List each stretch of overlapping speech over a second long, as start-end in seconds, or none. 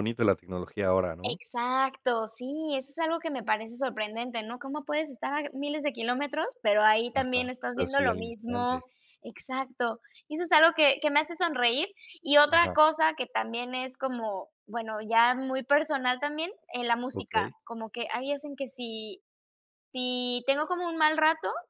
7.1-8.8